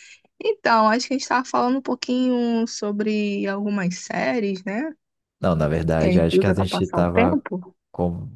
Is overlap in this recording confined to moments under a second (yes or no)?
no